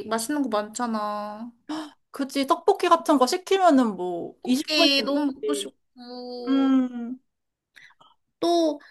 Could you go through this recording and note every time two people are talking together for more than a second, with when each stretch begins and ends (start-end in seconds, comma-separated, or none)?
4.4-5.7